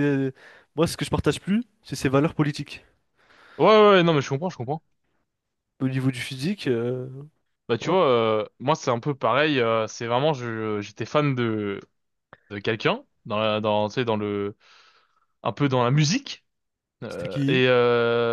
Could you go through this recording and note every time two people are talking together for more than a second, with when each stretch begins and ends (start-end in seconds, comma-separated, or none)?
none